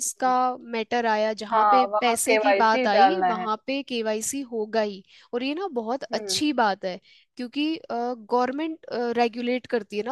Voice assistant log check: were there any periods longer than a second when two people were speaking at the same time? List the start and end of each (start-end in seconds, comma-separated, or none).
1.5-3.5